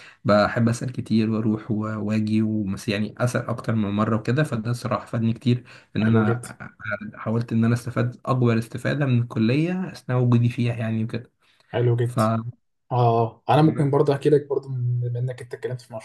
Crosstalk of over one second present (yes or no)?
no